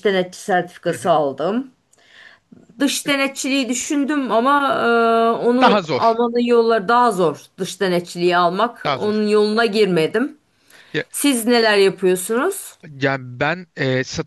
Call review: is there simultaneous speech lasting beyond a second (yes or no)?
no